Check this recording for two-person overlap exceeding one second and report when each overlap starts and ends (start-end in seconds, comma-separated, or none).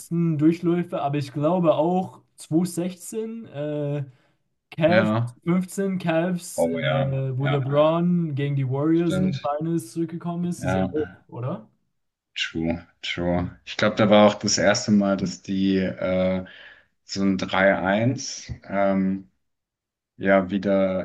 6.6-8.0